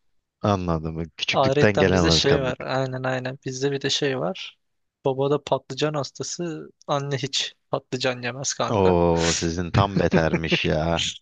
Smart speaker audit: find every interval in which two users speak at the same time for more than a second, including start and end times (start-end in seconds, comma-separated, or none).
1.3-2.5